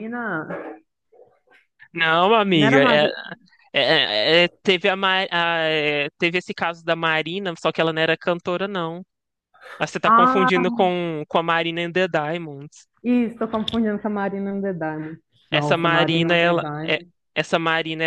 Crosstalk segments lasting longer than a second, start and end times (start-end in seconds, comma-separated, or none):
15.5-17.0